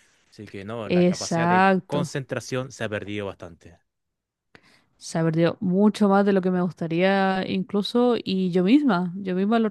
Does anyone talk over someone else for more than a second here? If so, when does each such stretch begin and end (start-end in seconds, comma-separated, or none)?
0.8-2.1